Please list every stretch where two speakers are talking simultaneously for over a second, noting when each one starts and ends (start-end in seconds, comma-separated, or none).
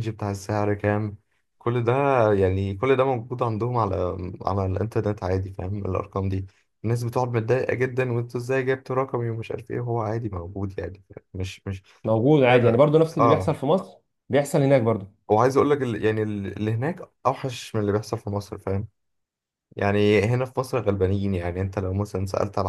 none